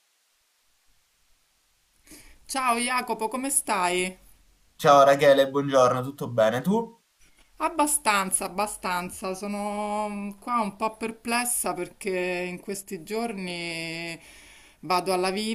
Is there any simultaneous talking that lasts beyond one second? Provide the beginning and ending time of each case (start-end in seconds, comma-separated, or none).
none